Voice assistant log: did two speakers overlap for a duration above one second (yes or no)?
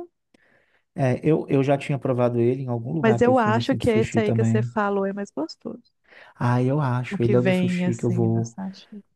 yes